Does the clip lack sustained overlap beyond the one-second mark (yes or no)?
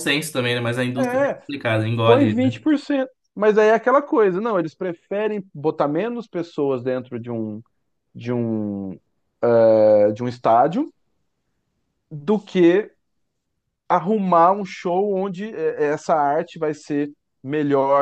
yes